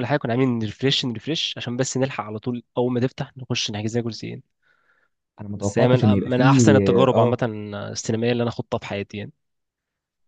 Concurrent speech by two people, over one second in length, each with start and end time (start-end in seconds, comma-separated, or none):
5.6-7.4